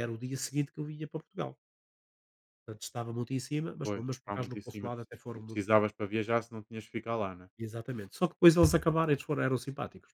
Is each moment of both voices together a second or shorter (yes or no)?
no